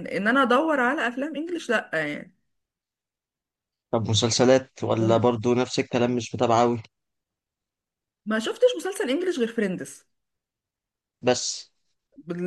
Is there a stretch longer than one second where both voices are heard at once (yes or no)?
no